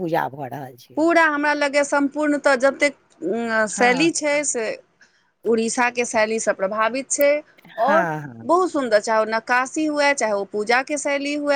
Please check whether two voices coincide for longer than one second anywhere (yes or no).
no